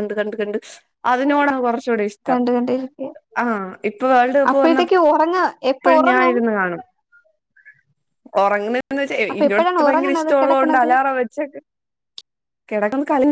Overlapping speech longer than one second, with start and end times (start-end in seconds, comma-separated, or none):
9.3-10.9